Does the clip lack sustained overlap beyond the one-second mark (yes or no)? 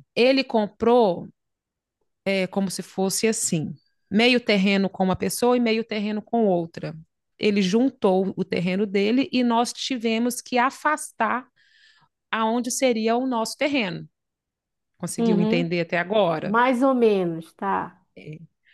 yes